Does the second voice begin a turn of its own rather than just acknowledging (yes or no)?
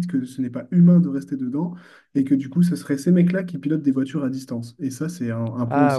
no